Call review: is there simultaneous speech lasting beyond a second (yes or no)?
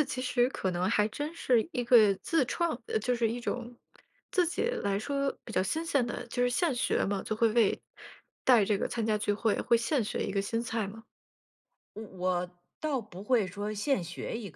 no